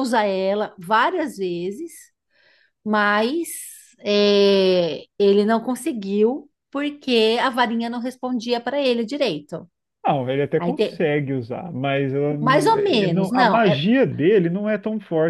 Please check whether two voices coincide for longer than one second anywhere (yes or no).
yes